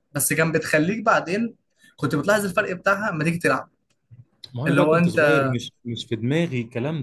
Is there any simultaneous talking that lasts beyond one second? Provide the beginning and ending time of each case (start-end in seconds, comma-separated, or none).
none